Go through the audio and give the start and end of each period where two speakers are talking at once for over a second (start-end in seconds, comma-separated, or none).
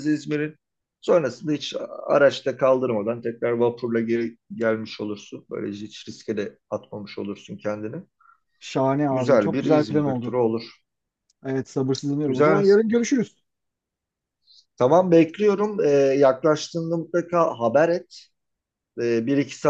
9.1-10.3